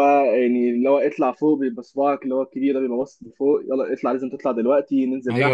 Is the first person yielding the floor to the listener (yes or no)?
yes